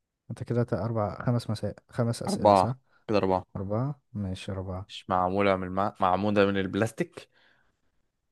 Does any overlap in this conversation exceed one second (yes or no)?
no